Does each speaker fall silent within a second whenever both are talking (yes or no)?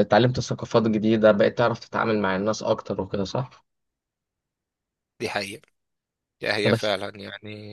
yes